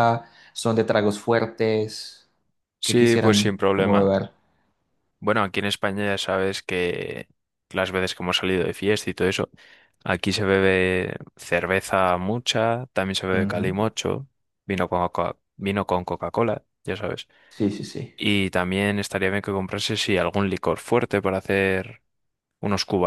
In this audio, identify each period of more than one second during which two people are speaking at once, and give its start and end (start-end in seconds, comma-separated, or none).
2.8-4.1